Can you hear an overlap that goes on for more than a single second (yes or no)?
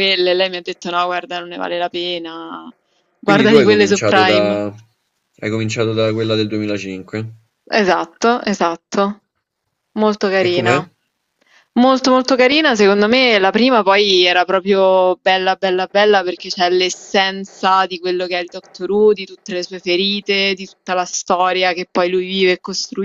yes